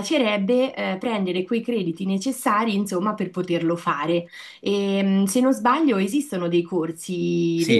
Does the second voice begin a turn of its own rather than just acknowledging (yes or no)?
yes